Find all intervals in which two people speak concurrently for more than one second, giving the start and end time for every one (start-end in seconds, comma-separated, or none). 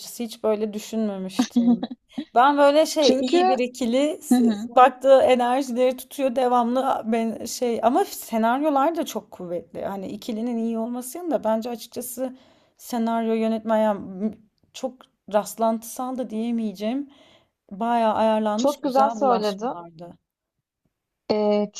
18.6-19.8